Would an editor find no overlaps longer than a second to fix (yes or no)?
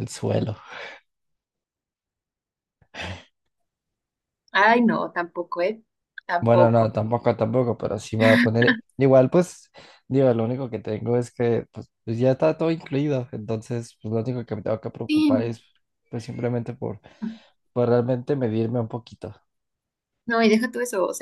yes